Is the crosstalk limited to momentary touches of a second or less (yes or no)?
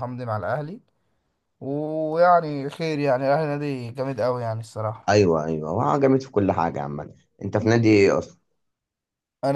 yes